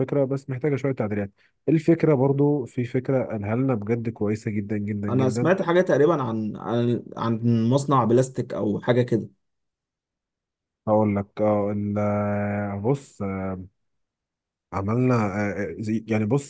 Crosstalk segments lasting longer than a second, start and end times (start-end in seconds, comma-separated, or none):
none